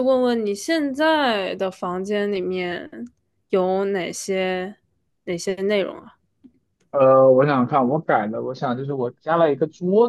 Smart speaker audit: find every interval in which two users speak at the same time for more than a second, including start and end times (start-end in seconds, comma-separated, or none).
none